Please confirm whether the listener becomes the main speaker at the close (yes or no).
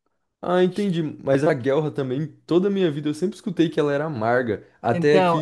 yes